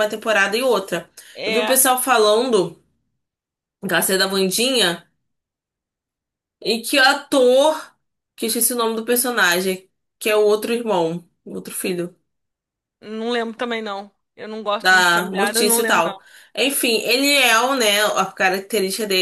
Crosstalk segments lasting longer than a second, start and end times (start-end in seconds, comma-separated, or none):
14.8-16.2